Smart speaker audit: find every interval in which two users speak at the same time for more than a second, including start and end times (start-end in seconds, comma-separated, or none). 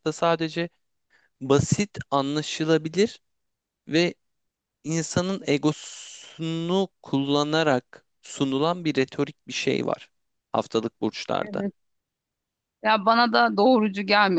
none